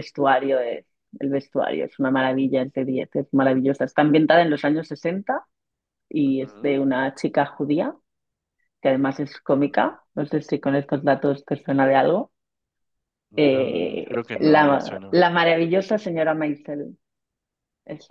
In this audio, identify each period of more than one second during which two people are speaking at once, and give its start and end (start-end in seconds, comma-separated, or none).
13.4-15.2